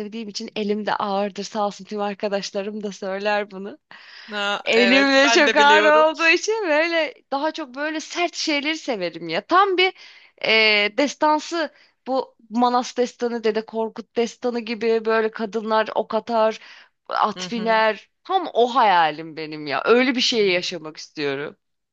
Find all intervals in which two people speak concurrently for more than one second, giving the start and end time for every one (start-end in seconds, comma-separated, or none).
4.7-6.0